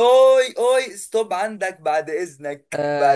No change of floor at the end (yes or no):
no